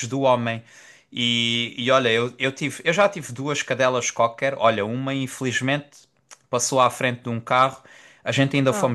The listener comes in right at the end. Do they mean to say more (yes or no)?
no